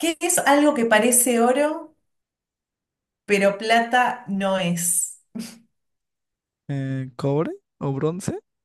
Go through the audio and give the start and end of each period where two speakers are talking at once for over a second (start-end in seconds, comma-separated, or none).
none